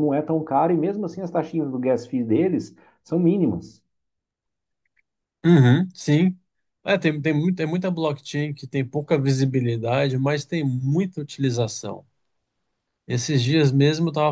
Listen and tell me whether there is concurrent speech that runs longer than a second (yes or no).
no